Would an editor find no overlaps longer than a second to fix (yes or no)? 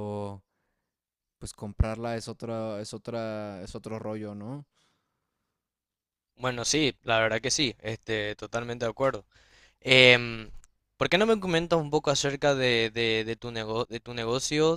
yes